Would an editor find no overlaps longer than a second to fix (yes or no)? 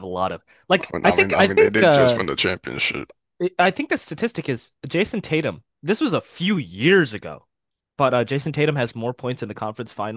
no